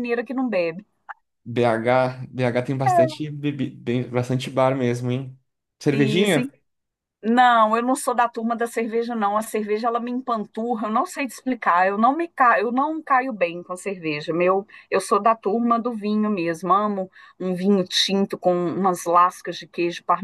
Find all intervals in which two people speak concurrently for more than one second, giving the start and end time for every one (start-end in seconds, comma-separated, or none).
none